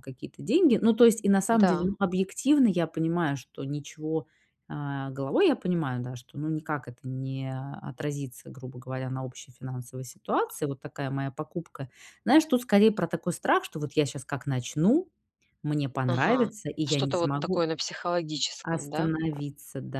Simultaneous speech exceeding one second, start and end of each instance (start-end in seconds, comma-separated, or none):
16.1-17.7